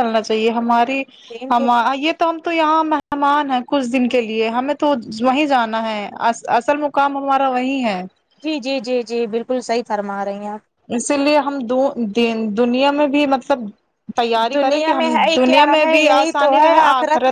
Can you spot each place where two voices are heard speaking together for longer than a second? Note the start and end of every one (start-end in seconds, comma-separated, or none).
14.5-16.8